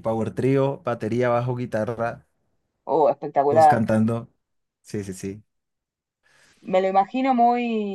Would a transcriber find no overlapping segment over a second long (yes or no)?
yes